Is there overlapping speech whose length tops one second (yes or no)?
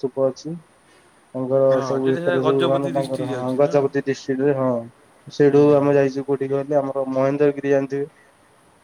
yes